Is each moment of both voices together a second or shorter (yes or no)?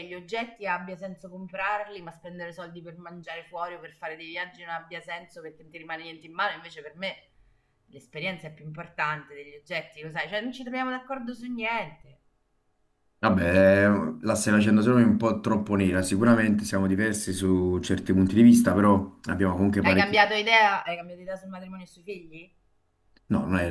yes